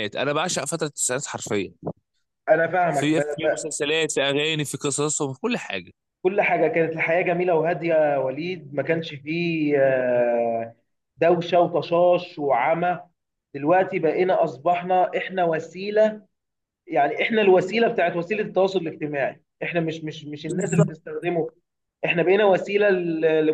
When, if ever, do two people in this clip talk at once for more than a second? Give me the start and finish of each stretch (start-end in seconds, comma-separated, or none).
none